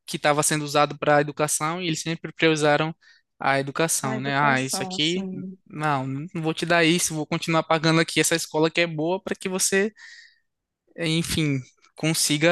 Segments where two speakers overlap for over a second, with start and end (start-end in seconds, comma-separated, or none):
4.0-5.3